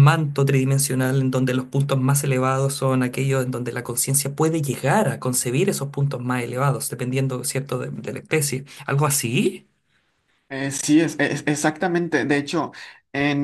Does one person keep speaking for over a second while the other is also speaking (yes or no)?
no